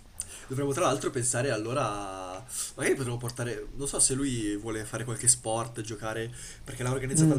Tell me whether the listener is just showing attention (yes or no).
no